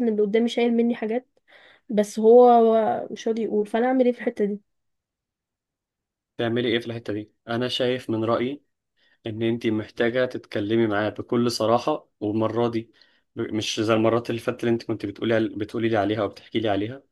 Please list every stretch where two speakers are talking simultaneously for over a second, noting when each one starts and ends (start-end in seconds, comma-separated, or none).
none